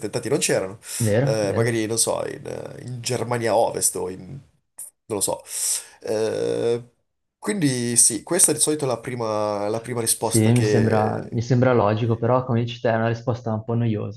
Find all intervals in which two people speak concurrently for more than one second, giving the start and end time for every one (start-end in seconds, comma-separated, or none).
10.2-11.4